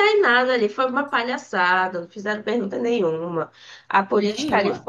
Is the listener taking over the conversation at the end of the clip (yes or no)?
no